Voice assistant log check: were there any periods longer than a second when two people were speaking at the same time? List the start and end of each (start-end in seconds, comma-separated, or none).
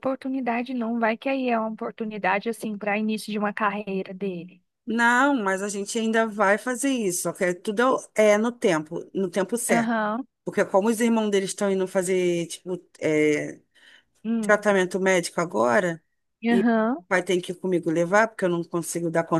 none